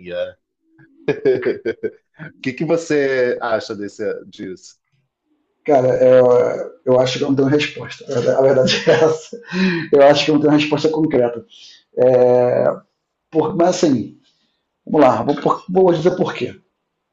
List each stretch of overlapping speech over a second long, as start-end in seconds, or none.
none